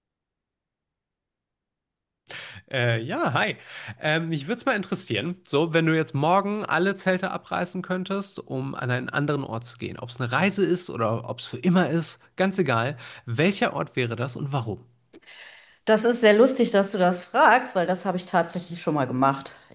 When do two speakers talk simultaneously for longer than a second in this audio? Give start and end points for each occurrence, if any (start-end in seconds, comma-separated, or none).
none